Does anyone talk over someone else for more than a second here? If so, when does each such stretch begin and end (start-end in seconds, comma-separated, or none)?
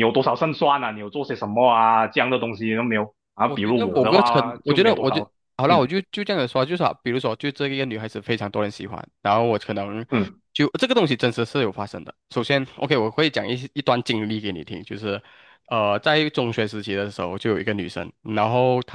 3.4-5.9